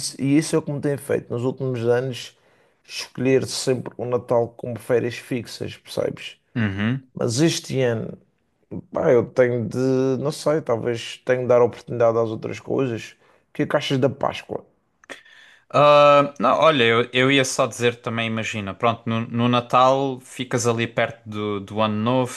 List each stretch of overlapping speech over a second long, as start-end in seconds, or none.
none